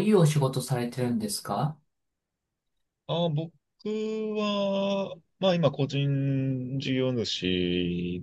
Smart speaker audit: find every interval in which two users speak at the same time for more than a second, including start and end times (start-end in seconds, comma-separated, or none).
none